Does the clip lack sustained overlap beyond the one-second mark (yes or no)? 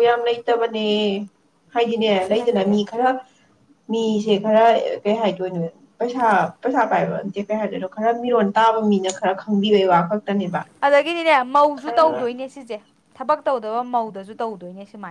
yes